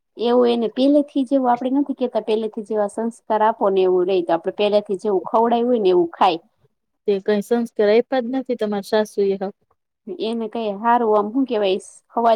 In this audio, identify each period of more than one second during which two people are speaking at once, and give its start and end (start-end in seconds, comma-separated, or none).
none